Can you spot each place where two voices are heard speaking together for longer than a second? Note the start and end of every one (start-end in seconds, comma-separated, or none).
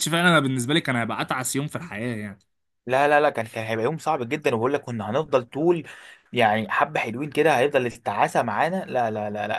none